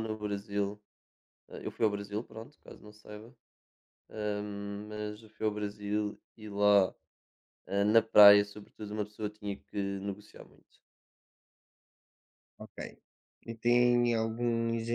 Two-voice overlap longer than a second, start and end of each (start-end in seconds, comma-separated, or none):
none